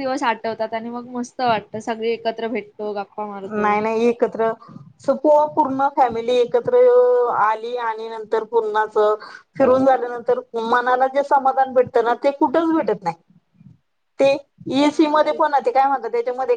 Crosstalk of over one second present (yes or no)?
no